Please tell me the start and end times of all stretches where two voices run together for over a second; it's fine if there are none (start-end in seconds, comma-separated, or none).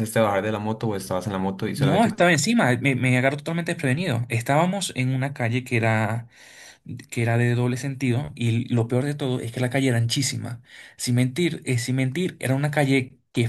none